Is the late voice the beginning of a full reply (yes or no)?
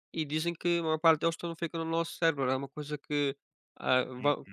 no